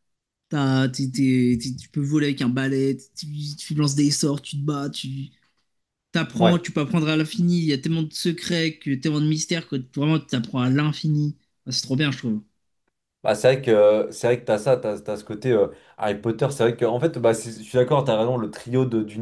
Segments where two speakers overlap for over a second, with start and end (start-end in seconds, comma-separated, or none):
none